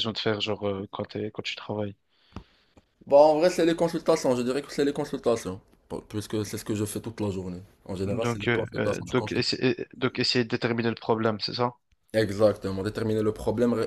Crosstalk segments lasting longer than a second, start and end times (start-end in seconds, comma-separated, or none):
8.1-9.4